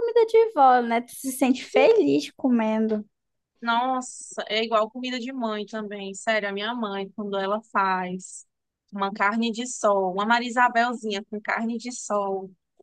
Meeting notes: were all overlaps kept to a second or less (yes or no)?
yes